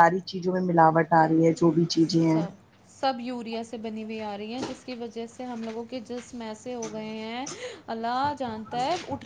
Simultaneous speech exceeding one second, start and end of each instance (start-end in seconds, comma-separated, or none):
none